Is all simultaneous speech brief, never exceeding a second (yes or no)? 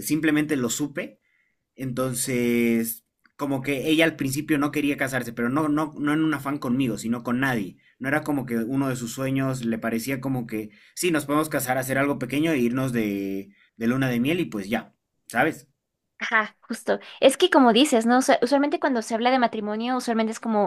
yes